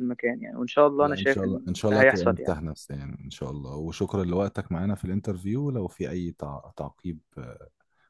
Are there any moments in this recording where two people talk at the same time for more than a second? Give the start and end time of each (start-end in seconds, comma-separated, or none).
1.0-2.6